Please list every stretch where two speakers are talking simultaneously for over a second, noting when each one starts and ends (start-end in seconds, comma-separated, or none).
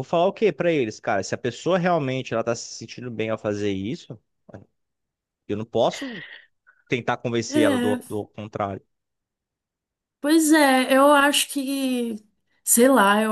none